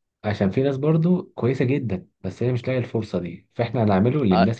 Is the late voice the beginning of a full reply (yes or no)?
no